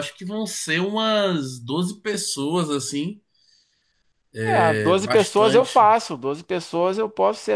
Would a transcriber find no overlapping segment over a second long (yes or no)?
no